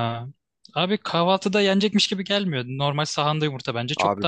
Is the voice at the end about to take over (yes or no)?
yes